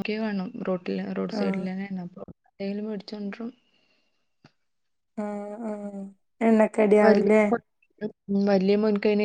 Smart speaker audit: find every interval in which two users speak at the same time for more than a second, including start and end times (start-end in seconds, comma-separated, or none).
none